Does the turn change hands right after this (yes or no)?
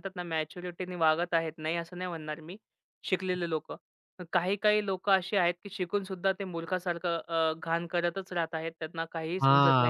yes